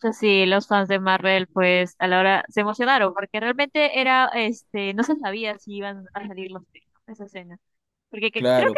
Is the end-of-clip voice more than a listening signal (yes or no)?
no